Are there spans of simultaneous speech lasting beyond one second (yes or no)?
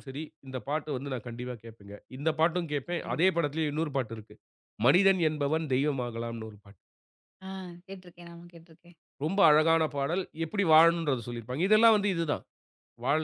no